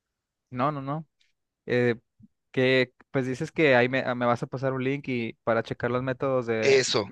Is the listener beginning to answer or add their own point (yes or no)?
yes